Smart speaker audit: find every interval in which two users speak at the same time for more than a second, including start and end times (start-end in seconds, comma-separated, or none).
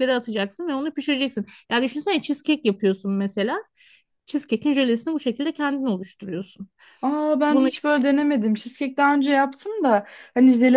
none